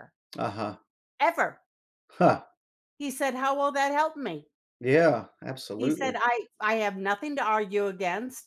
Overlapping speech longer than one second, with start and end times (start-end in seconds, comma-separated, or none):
none